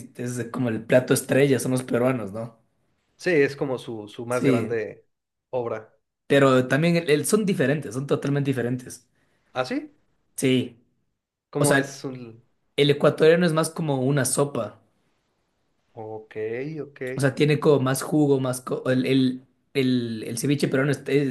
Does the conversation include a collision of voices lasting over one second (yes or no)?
no